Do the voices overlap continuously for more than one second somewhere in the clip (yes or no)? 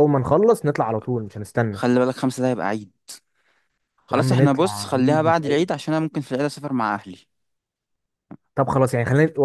yes